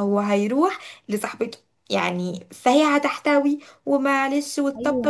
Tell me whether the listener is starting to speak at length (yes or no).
yes